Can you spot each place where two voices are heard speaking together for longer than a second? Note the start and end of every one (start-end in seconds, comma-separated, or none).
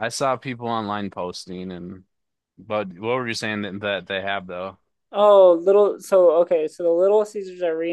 none